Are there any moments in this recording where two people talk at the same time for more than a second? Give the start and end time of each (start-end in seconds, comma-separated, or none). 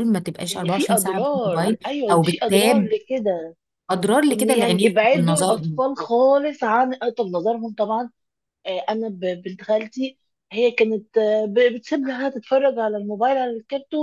0.5-2.9, 4.3-5.8